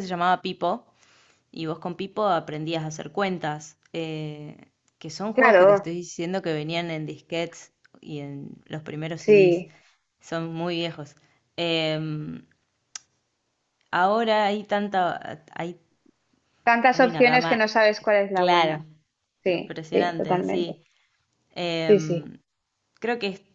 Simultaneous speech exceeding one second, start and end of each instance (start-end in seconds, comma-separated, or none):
16.9-18.8, 19.4-20.8